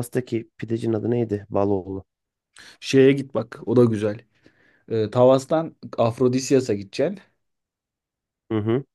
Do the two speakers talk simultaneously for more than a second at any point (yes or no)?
no